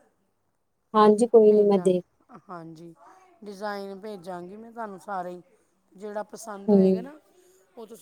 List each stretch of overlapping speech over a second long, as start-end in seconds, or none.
none